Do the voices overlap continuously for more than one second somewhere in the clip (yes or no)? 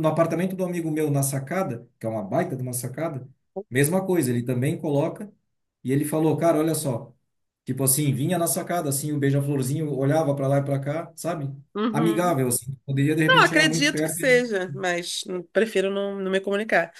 yes